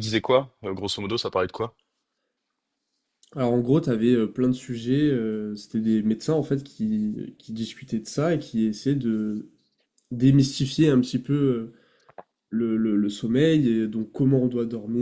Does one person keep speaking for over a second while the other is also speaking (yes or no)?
no